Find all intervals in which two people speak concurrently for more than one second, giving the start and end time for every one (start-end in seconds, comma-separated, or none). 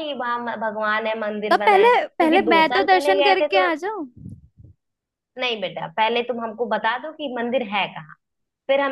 1.5-3.7